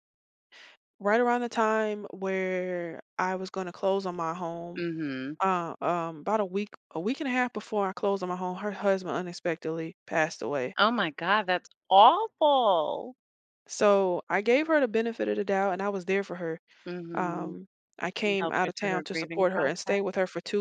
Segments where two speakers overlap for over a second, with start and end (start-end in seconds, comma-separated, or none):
18.2-20.0